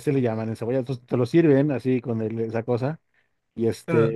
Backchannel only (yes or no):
yes